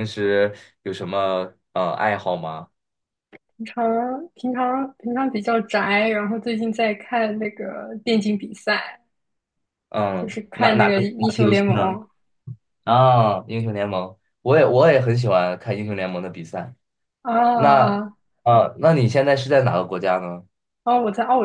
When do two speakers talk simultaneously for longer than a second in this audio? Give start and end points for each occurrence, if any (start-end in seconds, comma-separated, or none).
10.2-12.0